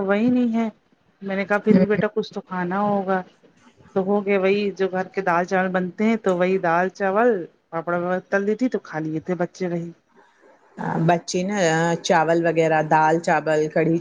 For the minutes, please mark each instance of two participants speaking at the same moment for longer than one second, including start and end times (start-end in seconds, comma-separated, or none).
none